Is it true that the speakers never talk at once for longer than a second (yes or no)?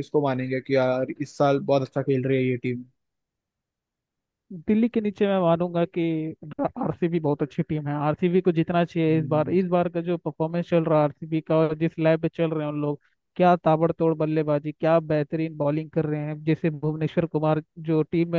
yes